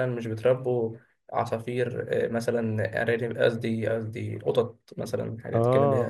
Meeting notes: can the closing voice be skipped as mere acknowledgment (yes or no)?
no